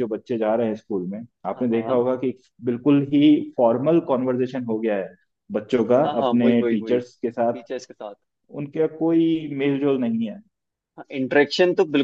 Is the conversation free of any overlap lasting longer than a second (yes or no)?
no